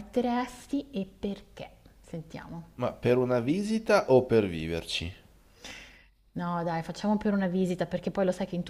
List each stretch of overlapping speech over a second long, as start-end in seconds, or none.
none